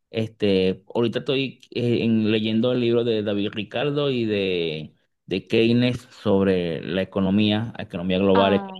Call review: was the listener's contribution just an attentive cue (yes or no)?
yes